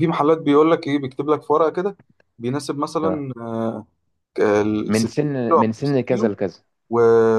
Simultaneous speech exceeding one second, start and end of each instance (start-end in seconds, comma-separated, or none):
4.9-6.3